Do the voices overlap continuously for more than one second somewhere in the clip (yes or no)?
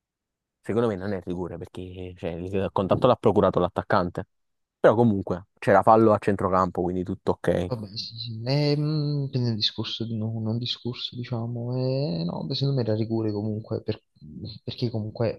no